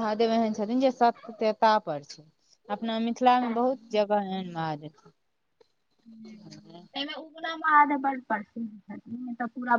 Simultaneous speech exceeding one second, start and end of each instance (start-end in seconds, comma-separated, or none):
none